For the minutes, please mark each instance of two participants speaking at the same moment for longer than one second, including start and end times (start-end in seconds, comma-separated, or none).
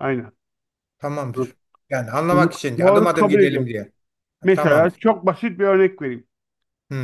2.3-3.7